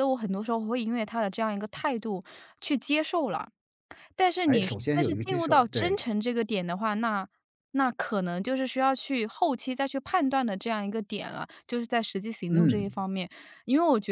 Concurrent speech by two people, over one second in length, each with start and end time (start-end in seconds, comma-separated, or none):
4.5-6.0